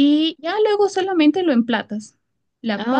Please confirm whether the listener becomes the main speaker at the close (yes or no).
no